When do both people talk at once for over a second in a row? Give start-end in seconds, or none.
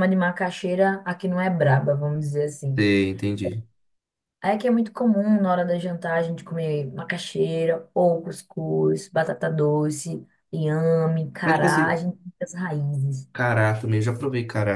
none